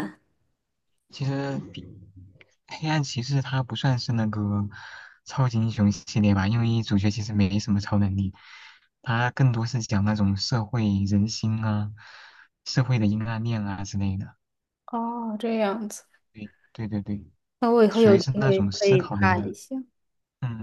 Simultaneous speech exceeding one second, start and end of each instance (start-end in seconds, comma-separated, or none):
17.9-19.5